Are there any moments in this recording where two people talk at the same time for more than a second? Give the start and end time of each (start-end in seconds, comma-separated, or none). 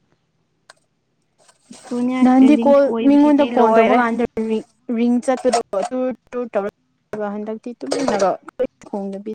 2.3-4.0